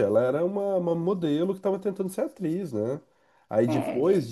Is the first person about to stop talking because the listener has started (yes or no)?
no